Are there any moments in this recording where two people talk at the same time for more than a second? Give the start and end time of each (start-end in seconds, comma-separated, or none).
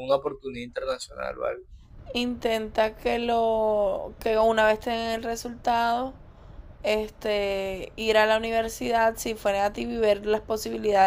none